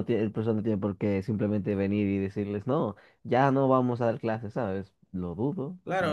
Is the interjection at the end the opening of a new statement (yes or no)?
yes